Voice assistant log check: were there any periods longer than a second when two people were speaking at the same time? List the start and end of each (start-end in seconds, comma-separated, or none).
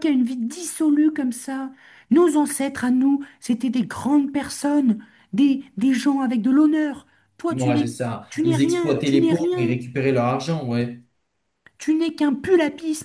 7.5-9.8